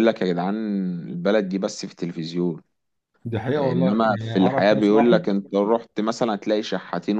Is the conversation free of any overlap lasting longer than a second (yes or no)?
no